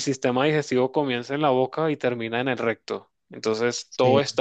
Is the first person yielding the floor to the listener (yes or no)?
no